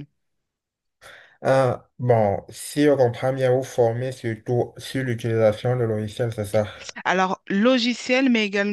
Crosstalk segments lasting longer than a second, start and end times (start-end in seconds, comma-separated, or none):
none